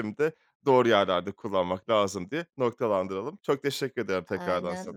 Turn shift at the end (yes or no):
yes